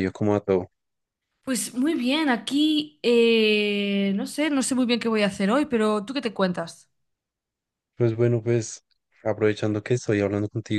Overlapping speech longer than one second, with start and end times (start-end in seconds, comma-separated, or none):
none